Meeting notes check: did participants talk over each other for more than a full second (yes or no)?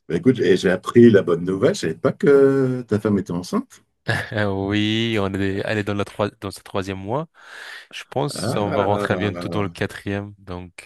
yes